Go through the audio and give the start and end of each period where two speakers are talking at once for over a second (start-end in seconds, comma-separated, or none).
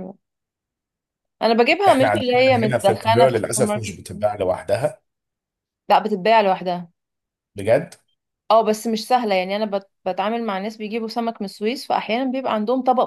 1.9-4.0